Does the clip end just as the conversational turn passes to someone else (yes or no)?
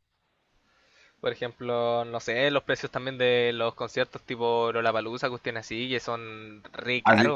yes